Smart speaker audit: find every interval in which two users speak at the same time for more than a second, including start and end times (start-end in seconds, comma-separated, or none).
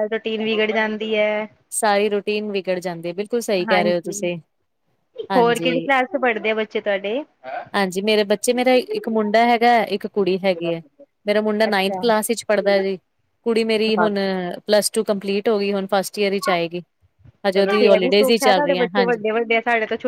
17.6-19.2